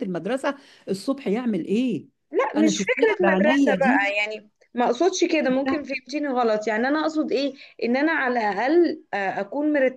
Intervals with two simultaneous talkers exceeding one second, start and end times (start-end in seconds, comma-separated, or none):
2.6-4.0